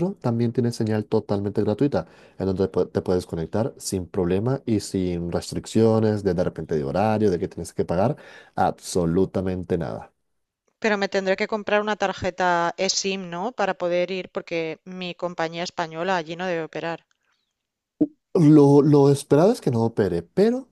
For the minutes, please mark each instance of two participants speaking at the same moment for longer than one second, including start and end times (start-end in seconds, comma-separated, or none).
none